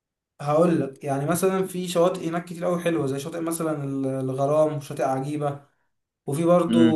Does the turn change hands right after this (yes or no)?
no